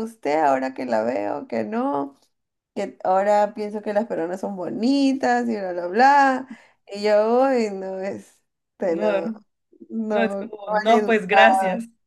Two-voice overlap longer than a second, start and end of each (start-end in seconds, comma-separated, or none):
10.1-11.4